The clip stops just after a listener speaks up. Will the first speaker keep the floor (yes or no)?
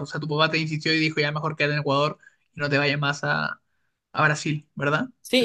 no